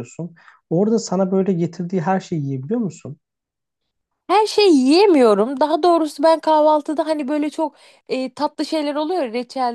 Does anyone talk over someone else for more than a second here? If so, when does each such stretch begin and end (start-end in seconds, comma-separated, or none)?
none